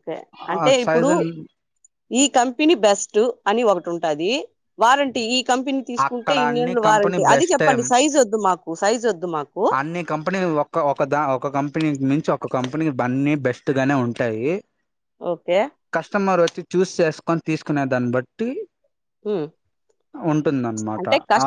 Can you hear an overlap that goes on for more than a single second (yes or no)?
yes